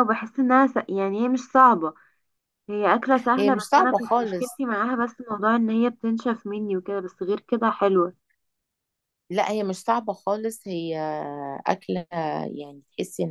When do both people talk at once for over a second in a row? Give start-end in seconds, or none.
3.4-4.6